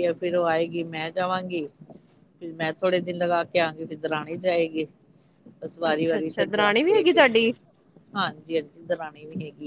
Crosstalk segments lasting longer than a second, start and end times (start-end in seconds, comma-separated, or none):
5.9-7.2